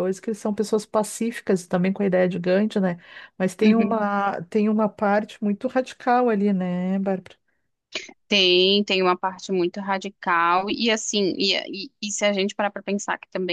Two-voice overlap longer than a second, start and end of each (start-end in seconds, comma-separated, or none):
none